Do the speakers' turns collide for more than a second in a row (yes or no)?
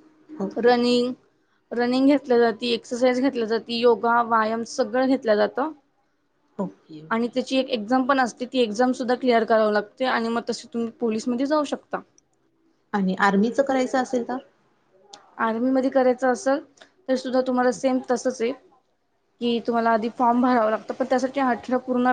no